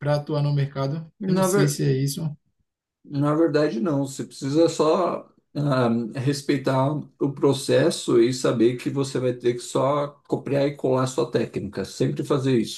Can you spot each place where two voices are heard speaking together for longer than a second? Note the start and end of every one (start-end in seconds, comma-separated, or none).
none